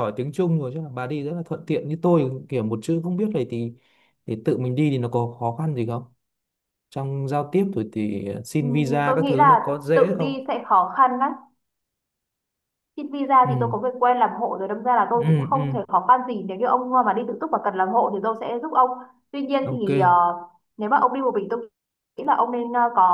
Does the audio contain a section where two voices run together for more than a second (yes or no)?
yes